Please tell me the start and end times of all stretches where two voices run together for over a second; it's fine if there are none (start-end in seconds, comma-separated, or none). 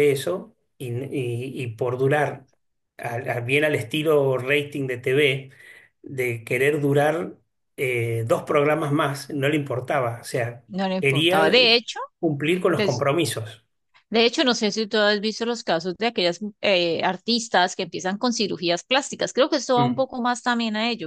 none